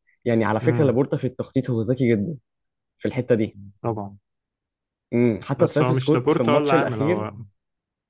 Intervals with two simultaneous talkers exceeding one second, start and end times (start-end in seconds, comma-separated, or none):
5.6-7.3